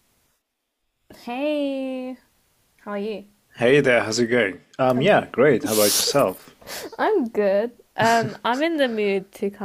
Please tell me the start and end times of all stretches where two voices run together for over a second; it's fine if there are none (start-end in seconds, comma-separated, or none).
none